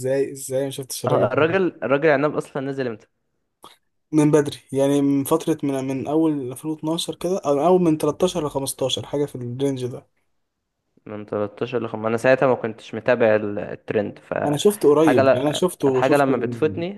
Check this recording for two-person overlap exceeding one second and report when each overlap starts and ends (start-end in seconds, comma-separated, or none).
14.5-16.4